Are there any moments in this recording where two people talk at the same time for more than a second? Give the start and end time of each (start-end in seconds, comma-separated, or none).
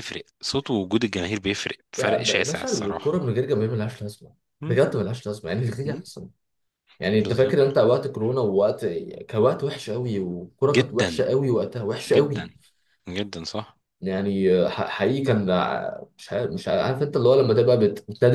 2.0-3.2